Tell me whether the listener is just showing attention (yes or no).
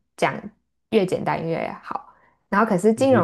yes